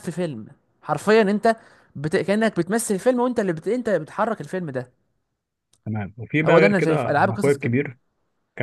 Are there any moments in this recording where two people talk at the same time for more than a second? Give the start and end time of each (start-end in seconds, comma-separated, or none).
6.5-7.8